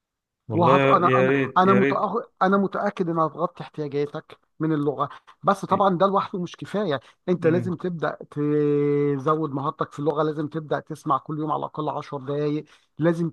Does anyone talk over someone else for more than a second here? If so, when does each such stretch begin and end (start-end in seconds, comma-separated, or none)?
0.5-2.0